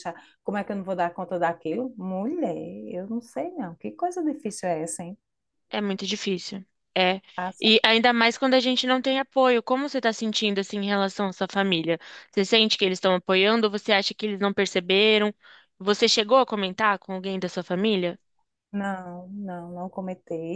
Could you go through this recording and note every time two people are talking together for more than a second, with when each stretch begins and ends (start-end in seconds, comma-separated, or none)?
none